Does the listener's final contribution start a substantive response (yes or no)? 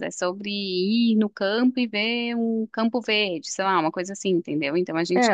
yes